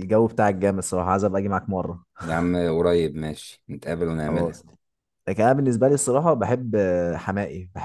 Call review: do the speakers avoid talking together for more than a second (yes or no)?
yes